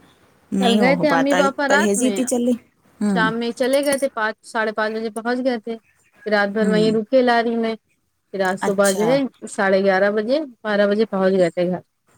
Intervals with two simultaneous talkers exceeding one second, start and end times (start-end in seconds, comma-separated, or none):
0.6-2.2